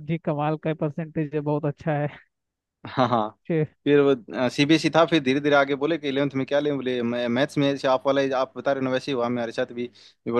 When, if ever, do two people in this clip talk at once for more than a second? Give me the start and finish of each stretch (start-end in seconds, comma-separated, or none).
none